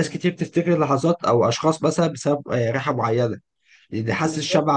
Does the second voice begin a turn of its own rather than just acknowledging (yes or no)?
no